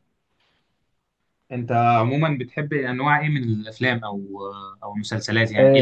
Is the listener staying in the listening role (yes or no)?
no